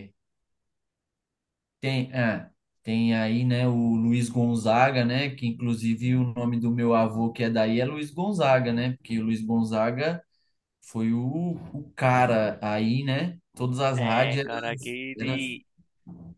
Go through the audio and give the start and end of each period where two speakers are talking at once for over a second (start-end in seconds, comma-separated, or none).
none